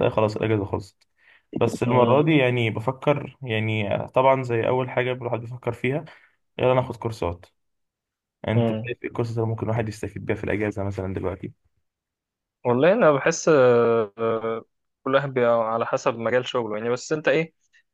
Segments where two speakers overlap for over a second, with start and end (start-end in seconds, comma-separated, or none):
none